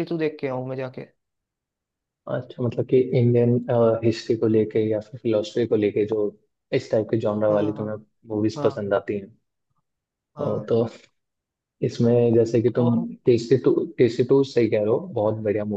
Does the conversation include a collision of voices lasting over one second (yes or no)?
no